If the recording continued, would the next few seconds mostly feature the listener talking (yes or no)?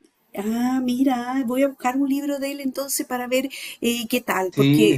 yes